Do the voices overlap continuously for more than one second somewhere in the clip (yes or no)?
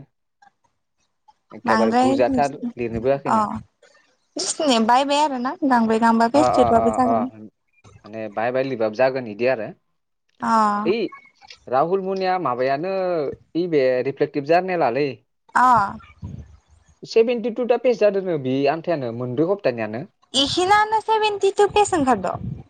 yes